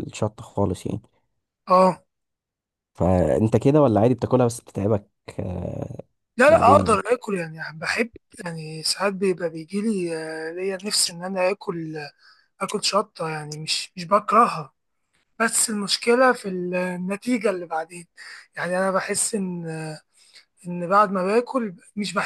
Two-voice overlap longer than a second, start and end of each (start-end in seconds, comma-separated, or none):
none